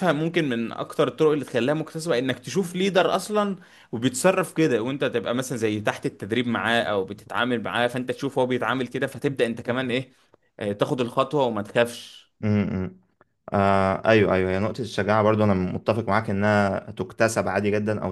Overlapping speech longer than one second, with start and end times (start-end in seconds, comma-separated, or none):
none